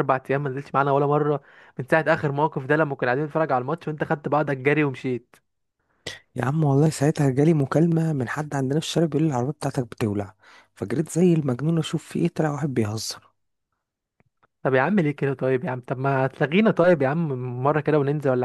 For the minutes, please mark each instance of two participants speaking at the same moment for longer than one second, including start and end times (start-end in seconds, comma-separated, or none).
none